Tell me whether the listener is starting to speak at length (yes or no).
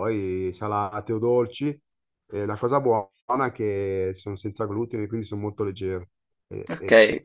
yes